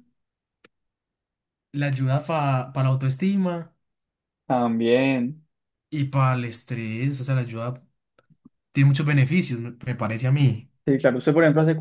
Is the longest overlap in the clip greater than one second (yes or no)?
no